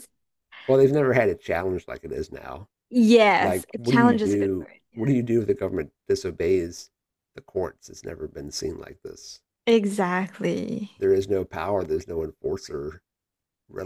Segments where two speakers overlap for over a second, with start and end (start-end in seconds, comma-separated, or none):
3.4-5.0